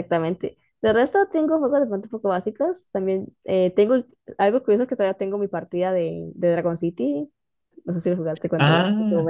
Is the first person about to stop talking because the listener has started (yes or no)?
yes